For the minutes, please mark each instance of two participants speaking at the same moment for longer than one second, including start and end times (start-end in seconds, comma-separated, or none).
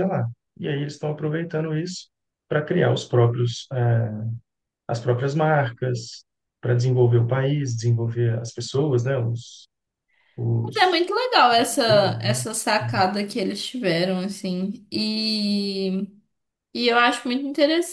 none